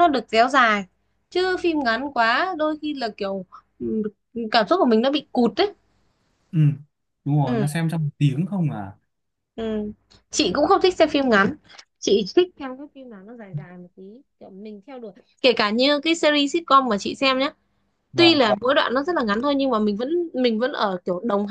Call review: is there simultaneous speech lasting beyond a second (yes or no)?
no